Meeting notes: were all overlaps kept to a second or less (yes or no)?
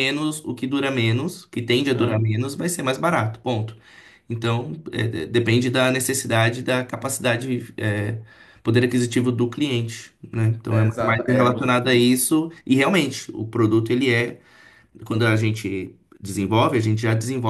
no